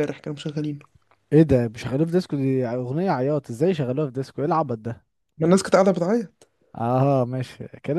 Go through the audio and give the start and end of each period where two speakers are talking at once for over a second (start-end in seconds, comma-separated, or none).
none